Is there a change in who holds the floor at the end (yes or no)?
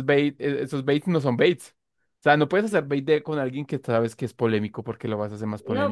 yes